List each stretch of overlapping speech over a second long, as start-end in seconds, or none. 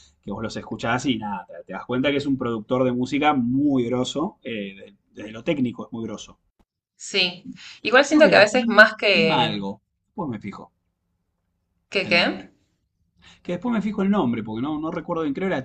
8.1-9.5